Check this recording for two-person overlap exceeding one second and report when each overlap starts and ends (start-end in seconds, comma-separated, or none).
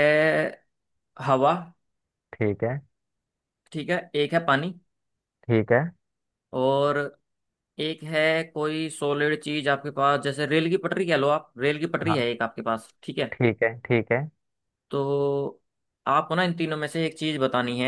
none